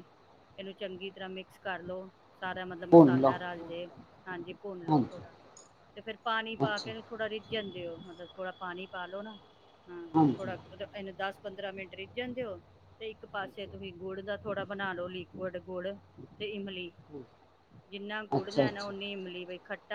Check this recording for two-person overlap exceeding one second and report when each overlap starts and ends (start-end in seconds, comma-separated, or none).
none